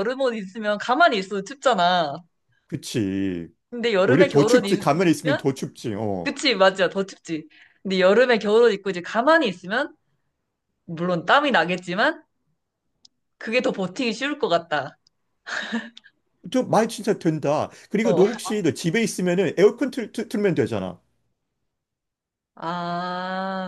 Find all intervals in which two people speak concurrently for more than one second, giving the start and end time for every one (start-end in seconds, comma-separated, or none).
4.0-5.5